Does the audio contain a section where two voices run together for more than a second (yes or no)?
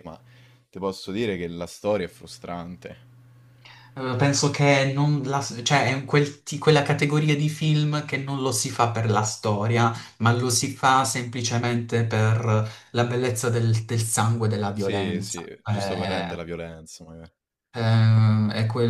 yes